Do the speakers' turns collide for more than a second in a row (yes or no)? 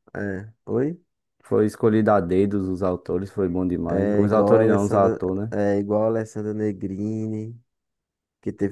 yes